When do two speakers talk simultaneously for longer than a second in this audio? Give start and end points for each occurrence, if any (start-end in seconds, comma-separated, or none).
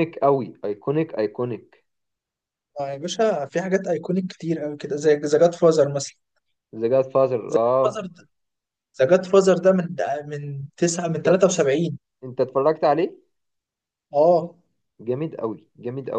none